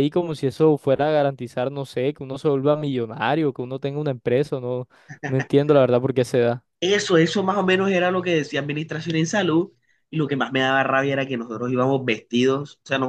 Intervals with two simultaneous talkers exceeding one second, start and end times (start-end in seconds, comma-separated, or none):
none